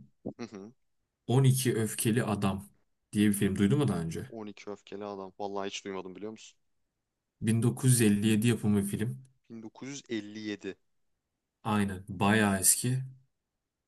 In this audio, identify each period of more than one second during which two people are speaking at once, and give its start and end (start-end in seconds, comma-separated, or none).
none